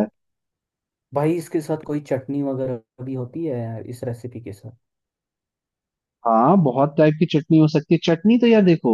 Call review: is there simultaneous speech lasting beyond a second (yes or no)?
no